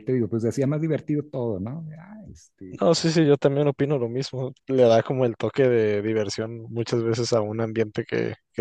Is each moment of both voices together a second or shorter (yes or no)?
yes